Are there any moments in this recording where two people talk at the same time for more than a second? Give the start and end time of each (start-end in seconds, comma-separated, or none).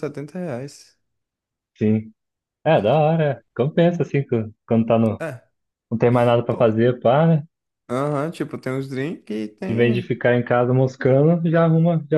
none